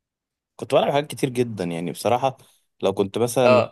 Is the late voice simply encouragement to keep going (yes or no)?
yes